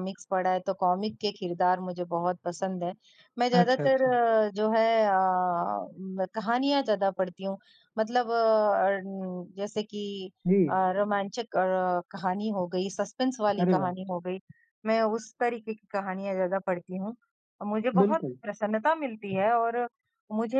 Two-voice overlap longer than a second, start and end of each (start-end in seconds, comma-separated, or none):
none